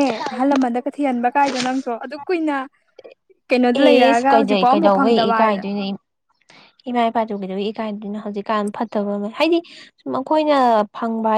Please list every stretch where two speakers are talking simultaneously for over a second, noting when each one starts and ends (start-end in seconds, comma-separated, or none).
3.8-5.7